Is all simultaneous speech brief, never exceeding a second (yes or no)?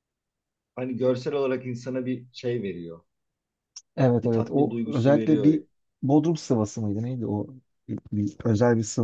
no